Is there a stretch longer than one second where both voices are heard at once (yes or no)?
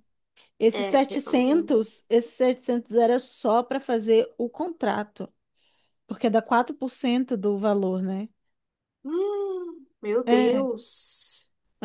yes